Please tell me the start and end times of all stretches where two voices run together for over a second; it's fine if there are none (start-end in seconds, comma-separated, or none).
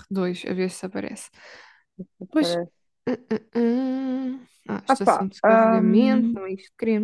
4.9-6.4